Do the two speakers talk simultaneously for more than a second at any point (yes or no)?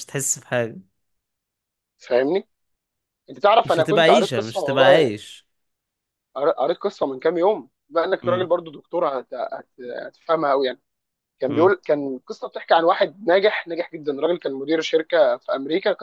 yes